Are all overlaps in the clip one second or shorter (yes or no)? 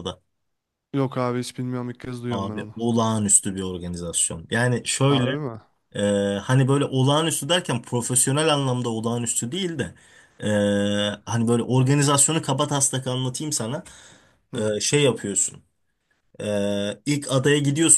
yes